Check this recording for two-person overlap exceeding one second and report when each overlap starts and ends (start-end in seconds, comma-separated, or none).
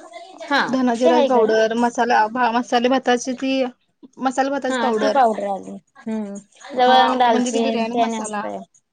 6.8-8.4